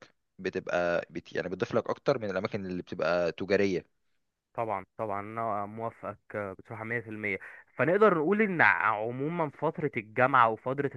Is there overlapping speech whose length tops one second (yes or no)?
no